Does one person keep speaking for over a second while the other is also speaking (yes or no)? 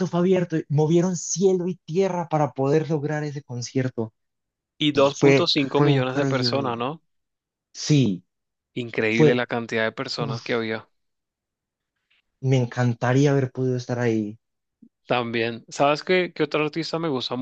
yes